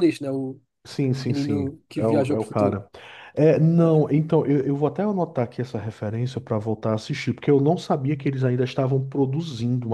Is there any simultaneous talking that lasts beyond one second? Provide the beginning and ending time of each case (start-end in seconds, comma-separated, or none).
1.2-2.8